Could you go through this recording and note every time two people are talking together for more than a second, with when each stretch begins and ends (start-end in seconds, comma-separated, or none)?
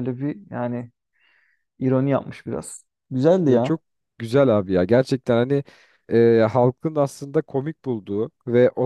none